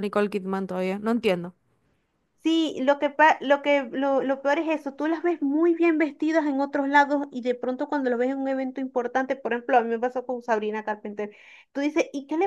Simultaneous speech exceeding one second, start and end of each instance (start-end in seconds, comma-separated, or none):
none